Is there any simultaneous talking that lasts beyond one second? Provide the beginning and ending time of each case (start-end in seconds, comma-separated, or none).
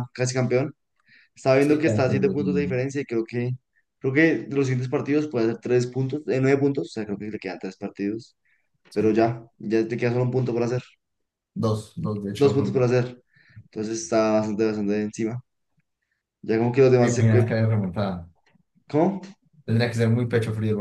1.6-2.8